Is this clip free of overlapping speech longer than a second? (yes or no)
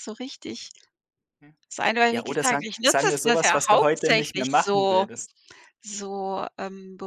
no